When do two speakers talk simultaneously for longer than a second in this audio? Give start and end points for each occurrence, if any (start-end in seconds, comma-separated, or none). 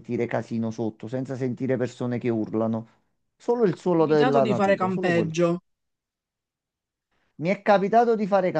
3.6-5.4